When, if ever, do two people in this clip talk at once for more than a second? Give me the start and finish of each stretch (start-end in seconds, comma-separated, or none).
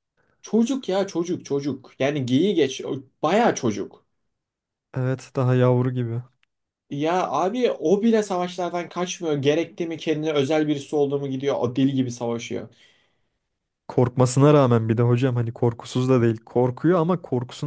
none